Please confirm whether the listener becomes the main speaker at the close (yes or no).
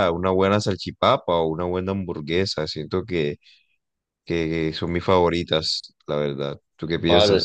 yes